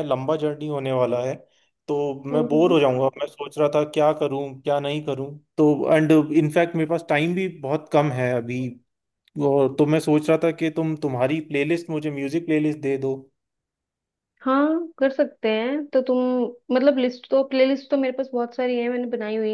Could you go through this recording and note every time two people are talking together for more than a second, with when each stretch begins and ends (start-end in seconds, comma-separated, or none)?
none